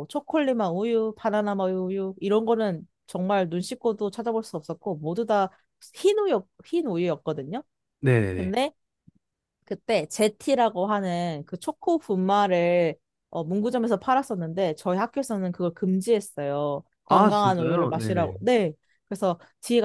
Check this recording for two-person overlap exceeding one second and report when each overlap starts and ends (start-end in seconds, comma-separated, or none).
17.1-18.4